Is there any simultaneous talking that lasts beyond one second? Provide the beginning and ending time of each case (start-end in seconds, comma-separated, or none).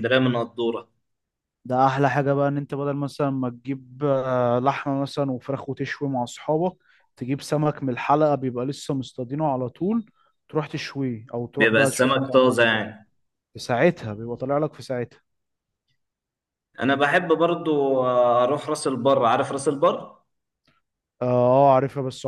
11.6-12.8